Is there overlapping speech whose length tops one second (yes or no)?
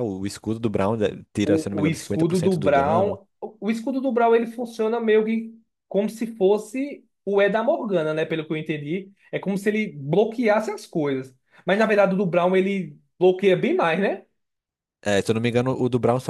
yes